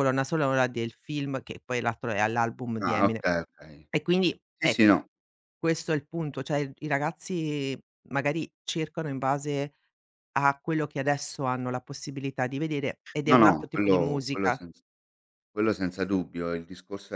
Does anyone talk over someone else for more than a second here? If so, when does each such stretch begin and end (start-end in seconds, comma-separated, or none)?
13.3-14.6